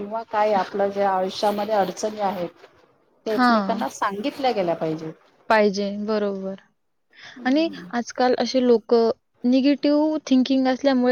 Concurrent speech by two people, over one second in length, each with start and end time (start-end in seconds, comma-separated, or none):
none